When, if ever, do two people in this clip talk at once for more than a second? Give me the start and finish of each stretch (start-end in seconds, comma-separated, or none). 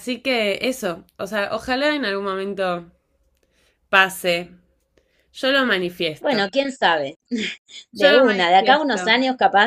7.9-9.1